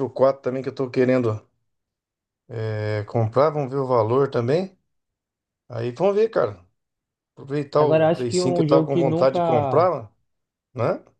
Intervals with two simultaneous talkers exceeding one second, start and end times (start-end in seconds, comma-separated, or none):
7.8-9.9